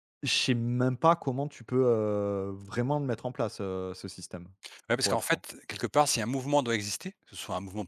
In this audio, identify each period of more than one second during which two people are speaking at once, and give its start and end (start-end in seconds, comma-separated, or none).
none